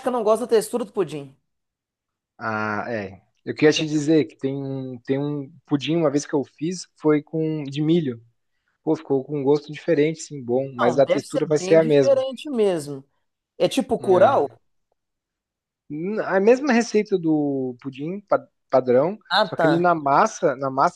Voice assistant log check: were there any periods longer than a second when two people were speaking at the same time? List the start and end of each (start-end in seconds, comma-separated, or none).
10.8-12.2